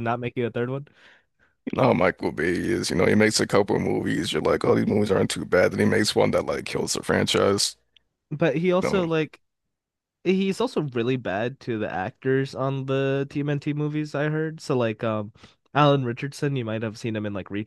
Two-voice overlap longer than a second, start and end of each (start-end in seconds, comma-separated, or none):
none